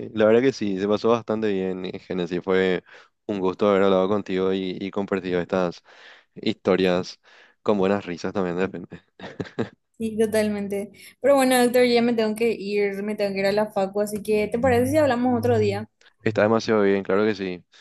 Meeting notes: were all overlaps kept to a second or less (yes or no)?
yes